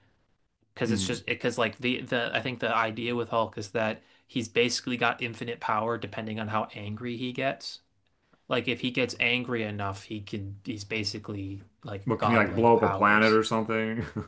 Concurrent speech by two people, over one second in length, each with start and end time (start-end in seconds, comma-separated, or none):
12.1-13.4